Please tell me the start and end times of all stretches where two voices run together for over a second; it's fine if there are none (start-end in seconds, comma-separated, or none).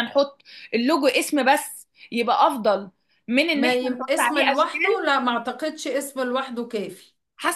3.5-5.1